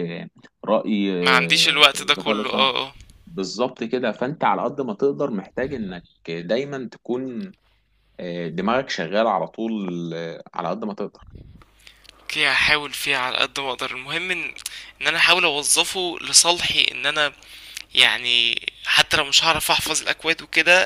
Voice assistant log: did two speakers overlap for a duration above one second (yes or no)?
yes